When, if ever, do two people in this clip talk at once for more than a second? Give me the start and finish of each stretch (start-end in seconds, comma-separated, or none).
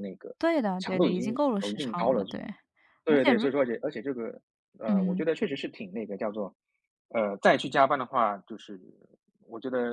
0.8-2.2